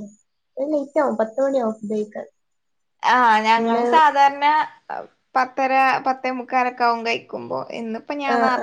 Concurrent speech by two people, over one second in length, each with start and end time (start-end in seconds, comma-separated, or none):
none